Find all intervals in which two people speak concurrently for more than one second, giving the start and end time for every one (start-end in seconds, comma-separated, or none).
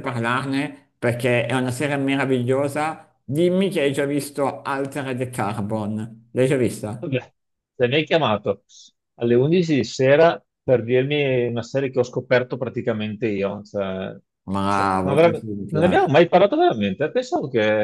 14.7-16.1